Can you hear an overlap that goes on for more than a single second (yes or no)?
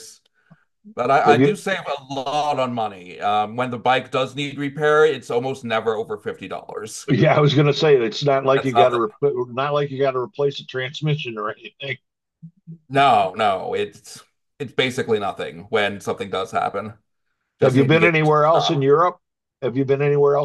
yes